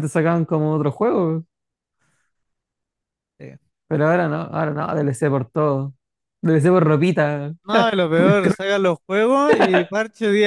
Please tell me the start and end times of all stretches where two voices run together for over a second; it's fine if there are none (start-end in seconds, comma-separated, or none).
none